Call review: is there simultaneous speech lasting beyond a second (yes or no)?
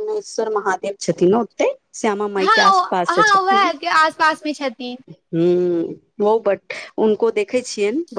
yes